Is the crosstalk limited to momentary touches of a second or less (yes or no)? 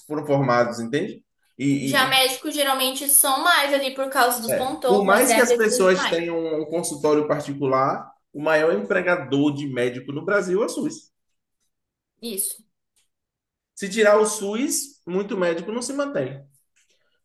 no